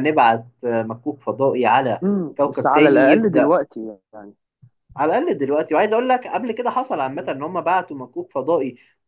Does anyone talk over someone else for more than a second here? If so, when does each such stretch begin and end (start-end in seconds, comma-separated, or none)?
2.0-3.5